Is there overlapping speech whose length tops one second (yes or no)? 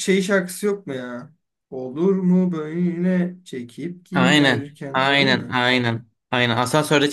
yes